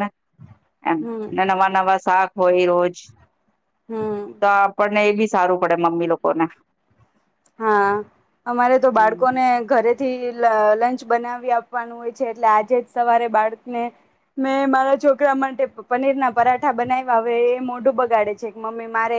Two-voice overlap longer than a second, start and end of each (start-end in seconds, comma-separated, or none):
none